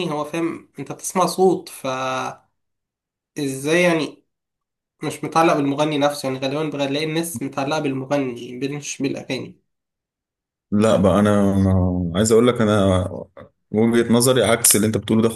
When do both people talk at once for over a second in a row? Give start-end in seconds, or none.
none